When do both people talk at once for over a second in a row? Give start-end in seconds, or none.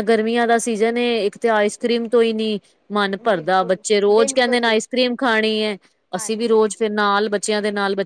3.3-4.8